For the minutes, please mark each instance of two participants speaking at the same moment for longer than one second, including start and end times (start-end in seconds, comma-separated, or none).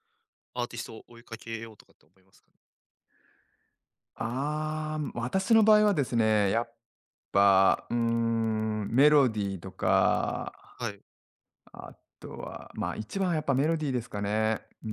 none